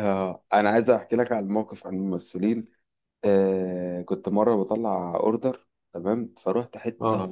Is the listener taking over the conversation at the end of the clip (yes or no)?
no